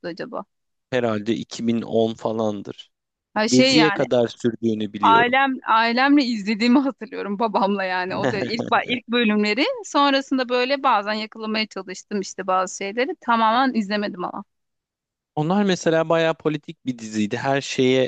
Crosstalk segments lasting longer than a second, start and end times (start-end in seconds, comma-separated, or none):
none